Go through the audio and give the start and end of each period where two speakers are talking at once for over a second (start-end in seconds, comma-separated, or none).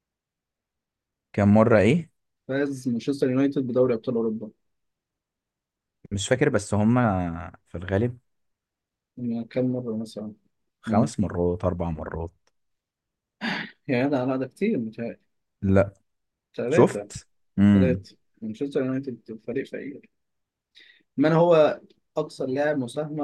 none